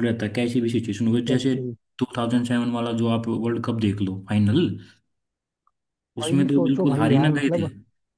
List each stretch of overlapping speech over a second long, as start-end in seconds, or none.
6.2-7.7